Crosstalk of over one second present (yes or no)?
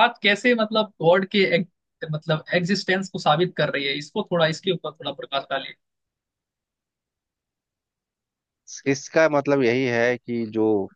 no